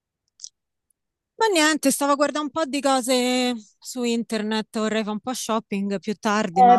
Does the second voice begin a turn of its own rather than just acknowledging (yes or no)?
yes